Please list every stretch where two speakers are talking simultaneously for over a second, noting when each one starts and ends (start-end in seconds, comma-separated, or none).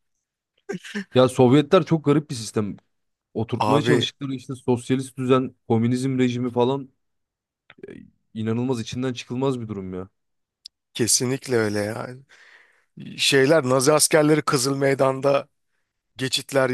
none